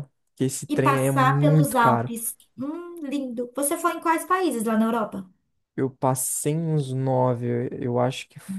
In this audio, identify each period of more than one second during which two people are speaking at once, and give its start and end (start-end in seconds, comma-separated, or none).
0.7-2.1